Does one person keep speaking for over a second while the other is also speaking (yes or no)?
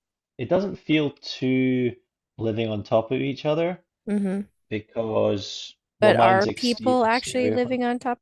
yes